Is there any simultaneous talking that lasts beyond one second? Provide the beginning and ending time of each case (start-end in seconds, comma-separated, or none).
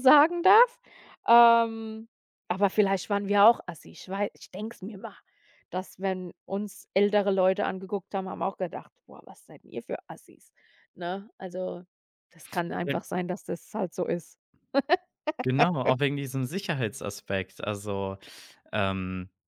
none